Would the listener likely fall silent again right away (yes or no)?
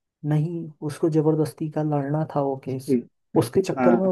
yes